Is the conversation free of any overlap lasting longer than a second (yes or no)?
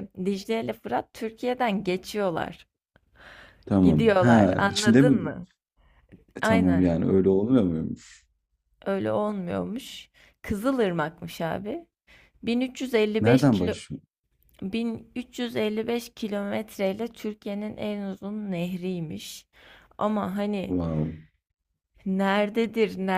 no